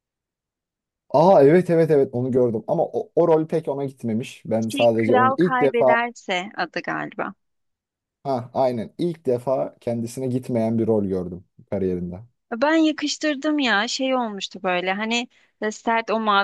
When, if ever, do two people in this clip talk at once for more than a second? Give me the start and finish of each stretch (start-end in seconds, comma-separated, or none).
4.7-6.0